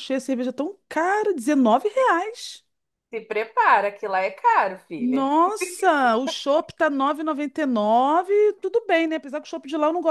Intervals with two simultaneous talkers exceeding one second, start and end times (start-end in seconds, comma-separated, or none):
none